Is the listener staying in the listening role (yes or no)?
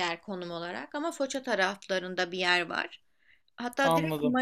yes